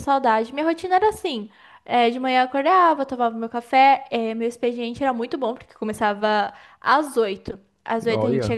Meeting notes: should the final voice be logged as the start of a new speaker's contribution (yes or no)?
no